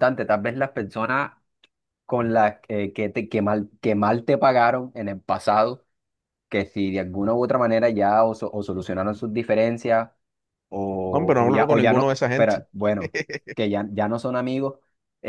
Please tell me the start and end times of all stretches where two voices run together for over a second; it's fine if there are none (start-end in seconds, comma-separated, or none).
11.1-12.6